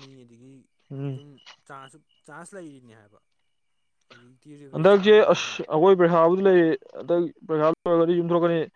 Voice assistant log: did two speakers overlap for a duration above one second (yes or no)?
no